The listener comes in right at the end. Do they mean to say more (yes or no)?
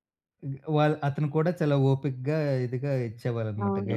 yes